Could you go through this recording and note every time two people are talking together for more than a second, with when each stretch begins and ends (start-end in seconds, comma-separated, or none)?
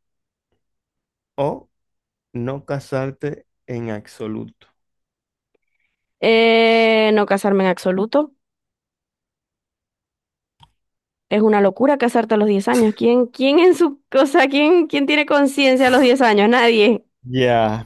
none